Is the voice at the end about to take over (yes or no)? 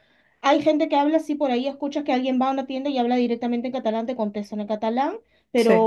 no